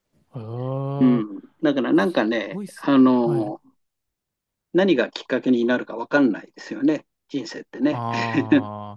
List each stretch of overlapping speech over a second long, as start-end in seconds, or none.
1.9-3.5